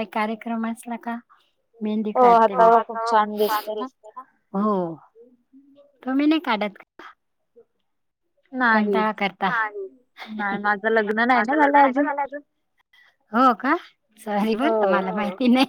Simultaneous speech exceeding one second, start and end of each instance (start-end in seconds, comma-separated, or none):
none